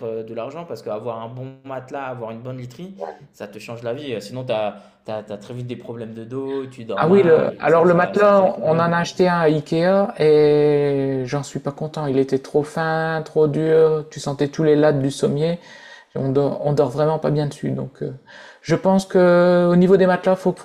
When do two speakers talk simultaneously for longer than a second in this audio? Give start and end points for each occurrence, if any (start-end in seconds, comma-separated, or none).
7.0-8.9